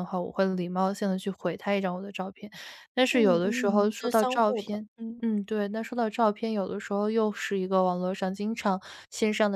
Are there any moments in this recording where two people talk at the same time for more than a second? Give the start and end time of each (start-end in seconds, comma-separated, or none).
3.1-5.2